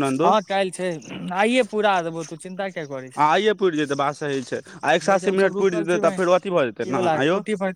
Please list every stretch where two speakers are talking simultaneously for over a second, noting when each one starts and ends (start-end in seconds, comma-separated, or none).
5.1-7.0